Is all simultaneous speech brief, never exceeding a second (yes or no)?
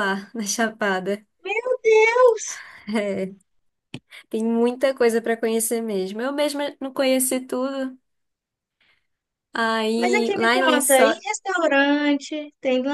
no